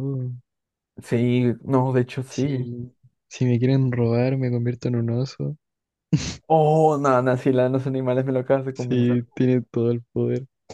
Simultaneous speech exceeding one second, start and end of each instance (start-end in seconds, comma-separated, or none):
none